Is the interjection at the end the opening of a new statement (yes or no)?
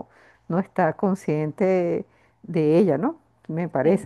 yes